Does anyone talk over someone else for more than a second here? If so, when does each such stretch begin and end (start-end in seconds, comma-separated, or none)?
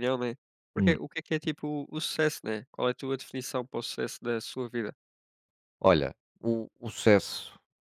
none